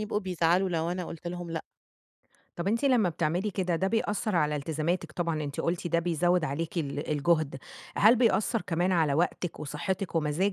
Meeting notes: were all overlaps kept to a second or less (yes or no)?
yes